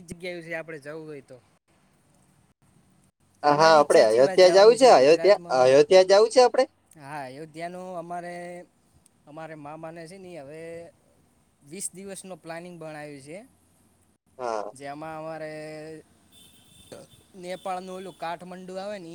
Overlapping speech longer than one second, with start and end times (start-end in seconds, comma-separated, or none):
3.5-5.6